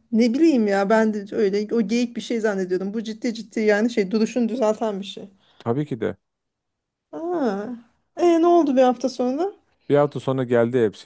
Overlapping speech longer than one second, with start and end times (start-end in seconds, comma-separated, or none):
none